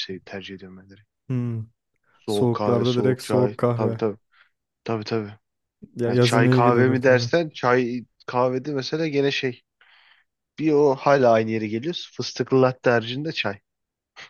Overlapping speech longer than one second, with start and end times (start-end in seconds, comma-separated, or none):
2.3-4.0, 6.1-7.3